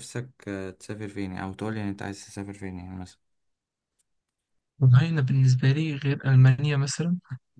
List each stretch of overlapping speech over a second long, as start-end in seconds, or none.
none